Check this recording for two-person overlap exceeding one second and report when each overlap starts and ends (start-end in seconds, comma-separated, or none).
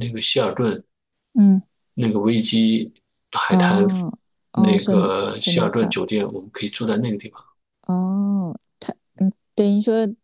4.5-5.9